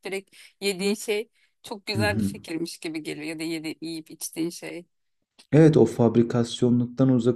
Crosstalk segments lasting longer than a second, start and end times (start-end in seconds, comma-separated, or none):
none